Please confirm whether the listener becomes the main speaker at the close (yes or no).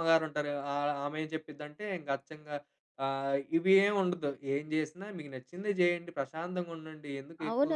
yes